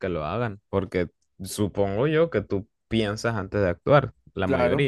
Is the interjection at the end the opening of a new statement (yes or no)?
yes